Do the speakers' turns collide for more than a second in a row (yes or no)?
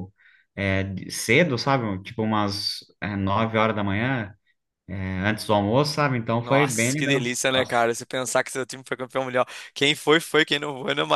yes